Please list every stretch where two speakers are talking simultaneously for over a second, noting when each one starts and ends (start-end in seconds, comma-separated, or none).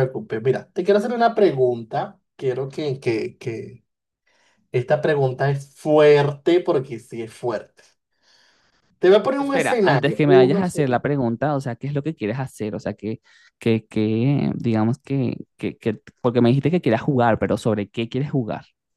9.4-11.0